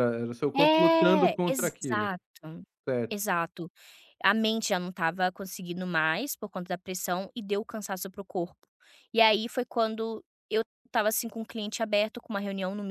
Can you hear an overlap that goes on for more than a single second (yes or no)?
yes